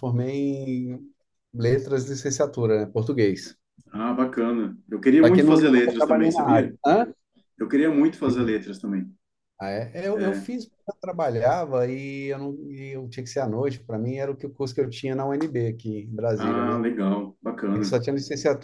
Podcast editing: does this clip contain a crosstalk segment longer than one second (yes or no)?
yes